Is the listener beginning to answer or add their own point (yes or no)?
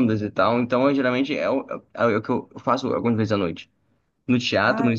no